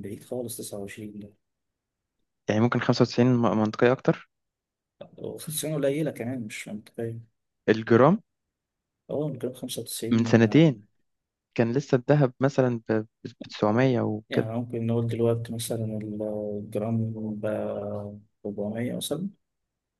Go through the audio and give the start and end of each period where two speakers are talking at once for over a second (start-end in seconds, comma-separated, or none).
none